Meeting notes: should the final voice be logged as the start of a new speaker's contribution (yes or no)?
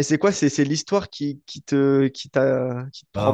yes